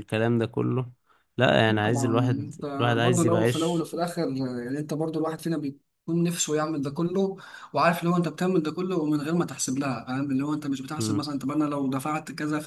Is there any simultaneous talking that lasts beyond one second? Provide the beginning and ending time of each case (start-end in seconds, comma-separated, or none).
1.7-3.9